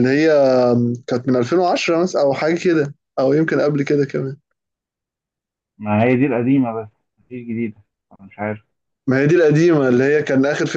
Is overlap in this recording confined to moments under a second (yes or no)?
yes